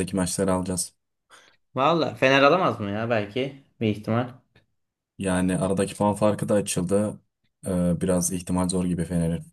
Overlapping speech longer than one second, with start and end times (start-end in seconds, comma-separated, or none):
none